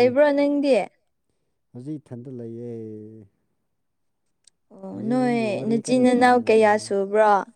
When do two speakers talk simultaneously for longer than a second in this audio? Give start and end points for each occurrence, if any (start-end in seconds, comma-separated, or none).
5.0-6.7